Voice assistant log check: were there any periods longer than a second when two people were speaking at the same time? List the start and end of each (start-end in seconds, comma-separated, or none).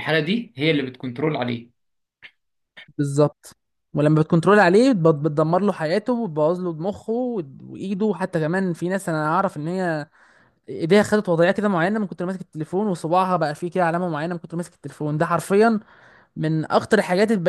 none